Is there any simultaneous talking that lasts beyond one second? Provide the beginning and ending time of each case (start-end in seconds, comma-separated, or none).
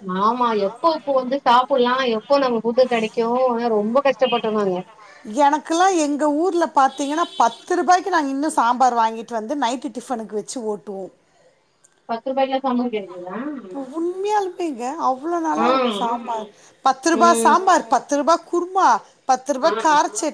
none